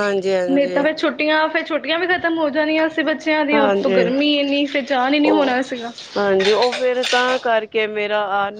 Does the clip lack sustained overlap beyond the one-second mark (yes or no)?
yes